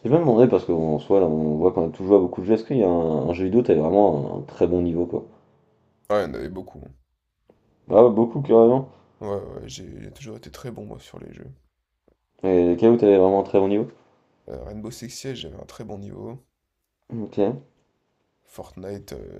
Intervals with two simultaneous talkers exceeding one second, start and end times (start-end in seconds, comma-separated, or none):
none